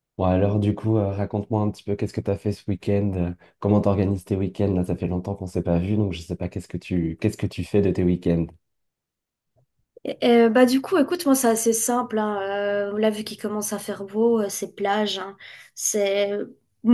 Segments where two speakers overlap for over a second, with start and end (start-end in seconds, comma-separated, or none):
none